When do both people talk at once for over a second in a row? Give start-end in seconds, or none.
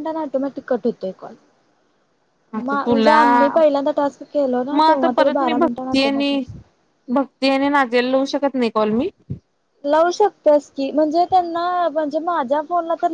4.7-6.4